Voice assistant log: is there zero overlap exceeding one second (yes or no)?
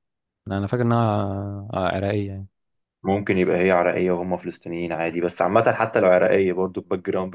yes